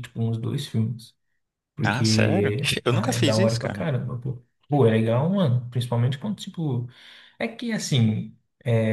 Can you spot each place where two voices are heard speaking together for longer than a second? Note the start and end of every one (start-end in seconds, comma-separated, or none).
1.8-3.8